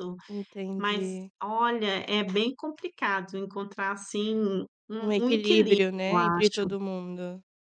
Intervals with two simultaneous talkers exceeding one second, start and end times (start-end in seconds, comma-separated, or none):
5.0-6.7